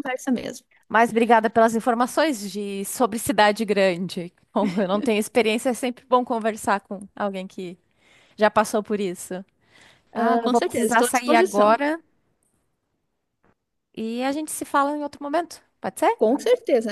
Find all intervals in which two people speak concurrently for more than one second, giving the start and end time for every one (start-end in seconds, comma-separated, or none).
10.1-11.8